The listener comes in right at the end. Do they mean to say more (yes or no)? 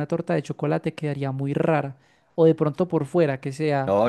yes